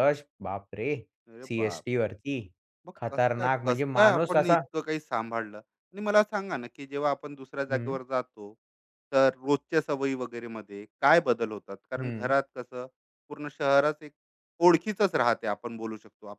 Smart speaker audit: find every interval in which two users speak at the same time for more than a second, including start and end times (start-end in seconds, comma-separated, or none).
3.0-4.6